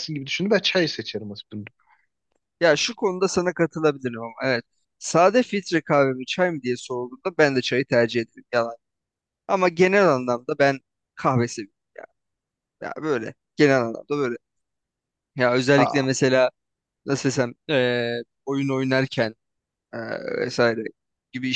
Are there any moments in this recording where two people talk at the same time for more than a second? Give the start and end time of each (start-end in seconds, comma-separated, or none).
none